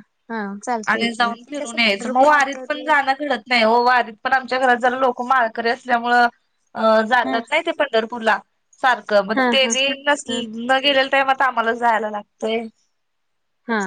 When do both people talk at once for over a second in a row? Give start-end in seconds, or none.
0.9-2.9